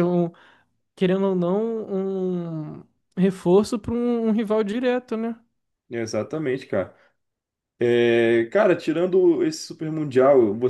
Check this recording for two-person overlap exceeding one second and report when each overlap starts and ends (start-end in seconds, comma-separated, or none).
none